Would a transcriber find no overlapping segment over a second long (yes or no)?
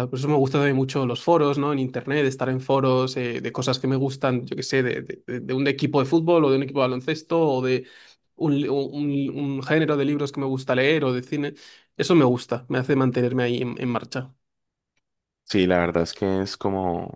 yes